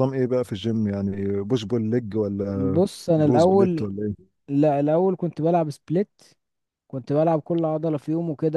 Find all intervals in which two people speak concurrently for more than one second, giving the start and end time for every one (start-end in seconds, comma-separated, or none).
2.5-3.9